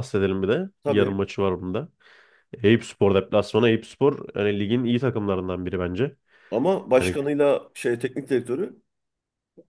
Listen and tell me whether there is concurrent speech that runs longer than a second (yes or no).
no